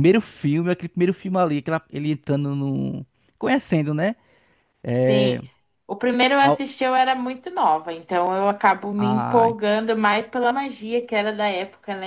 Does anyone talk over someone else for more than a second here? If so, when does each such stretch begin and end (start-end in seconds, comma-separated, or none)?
none